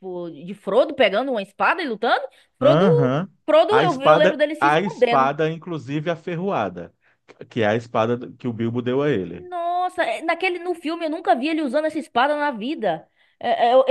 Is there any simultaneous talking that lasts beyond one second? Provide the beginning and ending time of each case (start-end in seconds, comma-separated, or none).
3.7-5.3